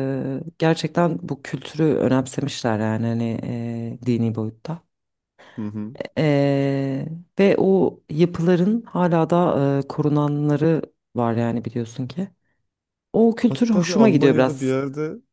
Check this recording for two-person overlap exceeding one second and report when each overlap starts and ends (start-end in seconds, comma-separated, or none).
13.5-14.8